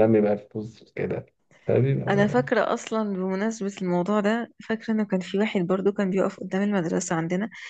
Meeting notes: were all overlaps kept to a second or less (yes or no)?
yes